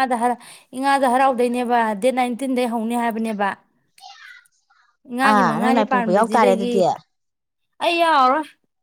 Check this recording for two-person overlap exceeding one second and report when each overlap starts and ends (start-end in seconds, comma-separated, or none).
5.3-6.7